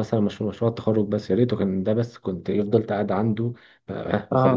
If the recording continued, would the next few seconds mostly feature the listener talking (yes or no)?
no